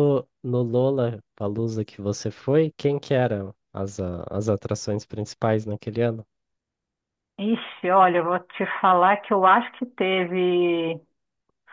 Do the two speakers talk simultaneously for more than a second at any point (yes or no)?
no